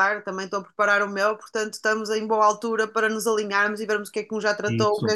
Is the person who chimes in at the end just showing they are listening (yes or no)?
yes